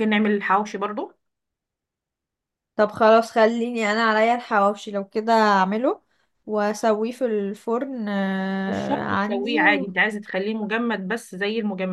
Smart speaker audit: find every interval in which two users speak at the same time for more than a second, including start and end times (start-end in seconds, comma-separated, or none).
8.7-9.9